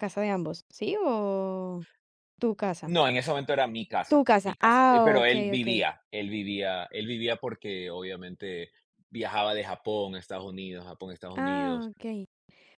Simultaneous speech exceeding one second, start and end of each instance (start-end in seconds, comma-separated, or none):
4.1-5.9